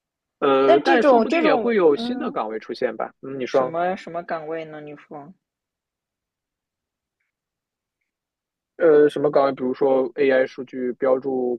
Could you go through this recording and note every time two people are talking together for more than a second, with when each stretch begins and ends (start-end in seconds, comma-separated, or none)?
0.6-2.4